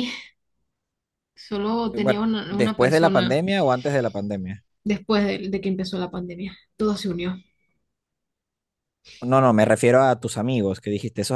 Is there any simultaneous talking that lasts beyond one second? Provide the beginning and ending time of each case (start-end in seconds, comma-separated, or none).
1.9-3.4